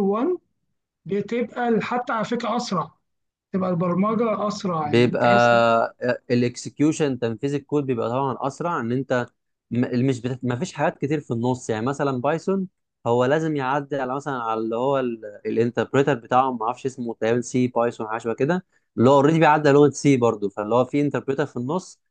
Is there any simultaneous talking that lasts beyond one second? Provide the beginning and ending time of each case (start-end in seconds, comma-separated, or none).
none